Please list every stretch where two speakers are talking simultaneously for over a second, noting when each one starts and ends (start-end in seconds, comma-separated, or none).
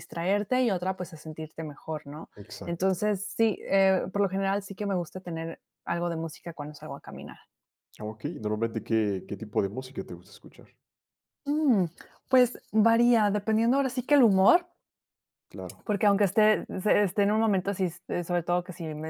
none